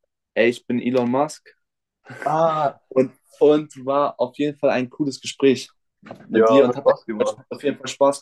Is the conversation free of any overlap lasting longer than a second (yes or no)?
yes